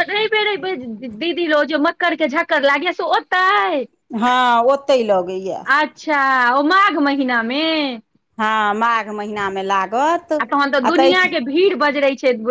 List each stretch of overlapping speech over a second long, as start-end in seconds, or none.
none